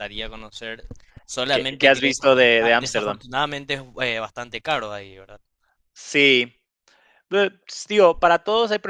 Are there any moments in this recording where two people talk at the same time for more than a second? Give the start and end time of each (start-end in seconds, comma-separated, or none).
1.5-3.2